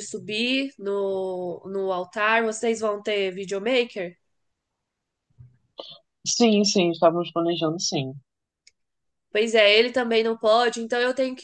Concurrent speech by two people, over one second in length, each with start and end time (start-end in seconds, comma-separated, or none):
none